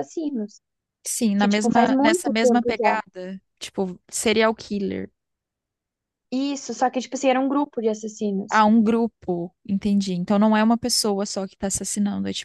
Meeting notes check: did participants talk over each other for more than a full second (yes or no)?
yes